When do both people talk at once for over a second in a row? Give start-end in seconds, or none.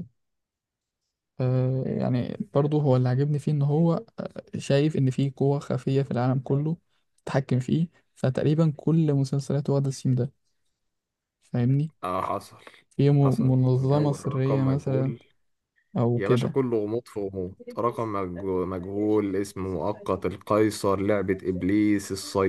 13.2-15.1